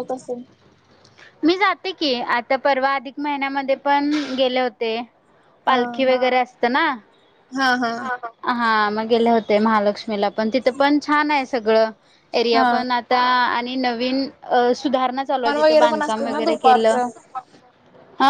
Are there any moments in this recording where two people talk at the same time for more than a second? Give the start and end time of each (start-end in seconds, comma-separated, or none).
15.4-17.0